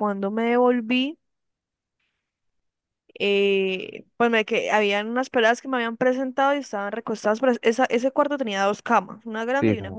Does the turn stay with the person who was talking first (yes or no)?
yes